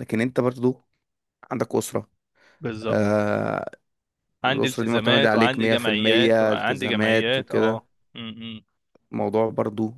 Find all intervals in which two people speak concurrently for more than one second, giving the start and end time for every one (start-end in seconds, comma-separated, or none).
4.5-7.8